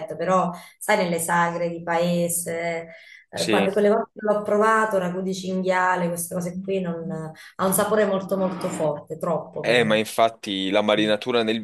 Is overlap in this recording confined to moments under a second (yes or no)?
yes